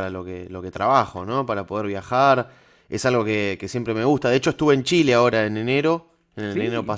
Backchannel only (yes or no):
yes